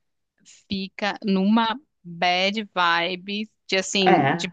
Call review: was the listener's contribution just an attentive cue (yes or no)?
yes